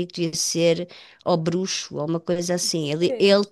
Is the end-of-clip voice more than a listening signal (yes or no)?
no